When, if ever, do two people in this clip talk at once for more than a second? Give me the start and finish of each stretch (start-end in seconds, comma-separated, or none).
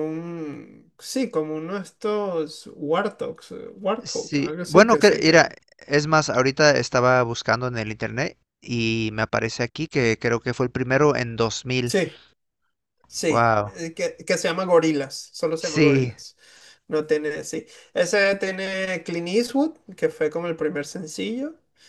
4.0-5.5